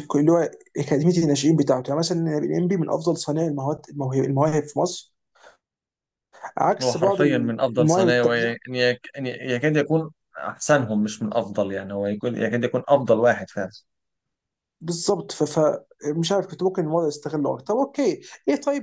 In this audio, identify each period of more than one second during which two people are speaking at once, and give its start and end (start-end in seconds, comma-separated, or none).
6.8-8.6